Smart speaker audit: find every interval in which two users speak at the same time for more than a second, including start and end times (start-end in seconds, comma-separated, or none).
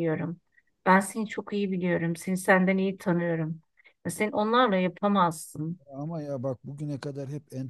none